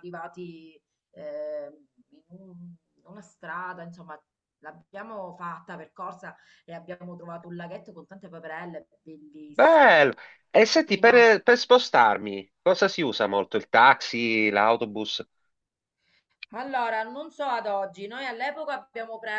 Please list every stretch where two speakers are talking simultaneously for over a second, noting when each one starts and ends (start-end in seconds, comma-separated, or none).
none